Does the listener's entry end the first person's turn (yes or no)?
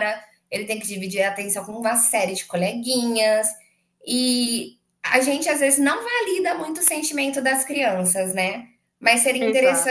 no